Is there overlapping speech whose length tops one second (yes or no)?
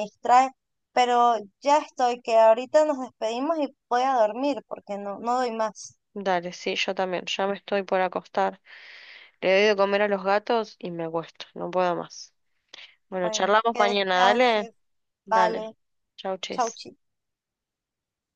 yes